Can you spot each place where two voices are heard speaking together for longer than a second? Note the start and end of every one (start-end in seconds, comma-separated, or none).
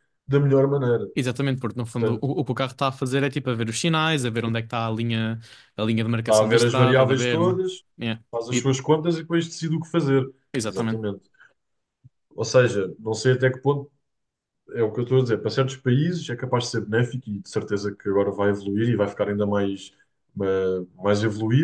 6.2-7.6